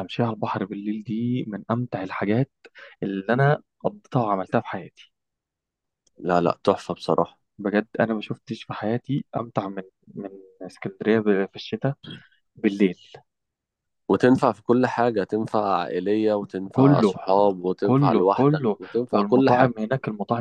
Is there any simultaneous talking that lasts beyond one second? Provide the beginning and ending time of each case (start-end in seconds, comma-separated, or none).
17.8-19.7